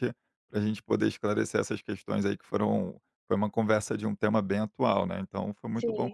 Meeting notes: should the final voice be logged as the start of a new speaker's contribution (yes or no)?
yes